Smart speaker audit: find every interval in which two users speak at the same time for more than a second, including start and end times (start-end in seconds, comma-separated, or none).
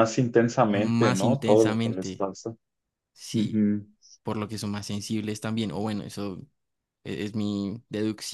0.7-2.2